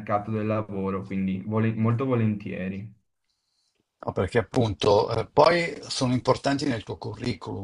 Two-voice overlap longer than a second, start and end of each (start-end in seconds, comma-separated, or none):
none